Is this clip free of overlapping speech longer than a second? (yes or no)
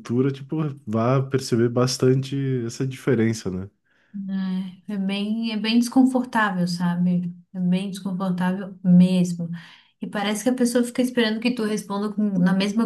yes